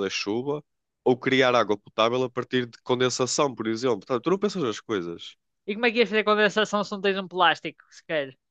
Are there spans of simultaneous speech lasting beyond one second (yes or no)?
no